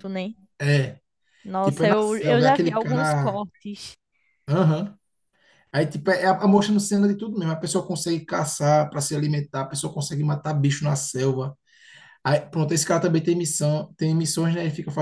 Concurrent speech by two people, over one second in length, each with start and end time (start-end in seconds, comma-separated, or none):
1.6-3.4